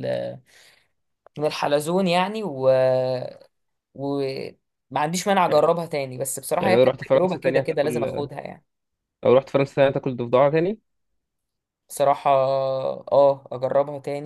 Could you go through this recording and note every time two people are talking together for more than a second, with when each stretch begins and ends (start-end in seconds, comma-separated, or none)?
6.6-8.1